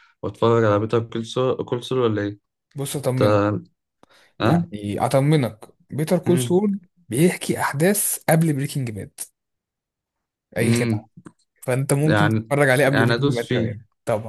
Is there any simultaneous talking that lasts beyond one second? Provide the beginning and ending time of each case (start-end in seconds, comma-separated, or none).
12.1-13.8